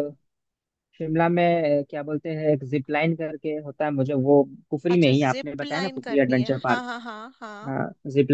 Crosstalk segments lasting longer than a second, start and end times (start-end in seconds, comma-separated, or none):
4.9-6.8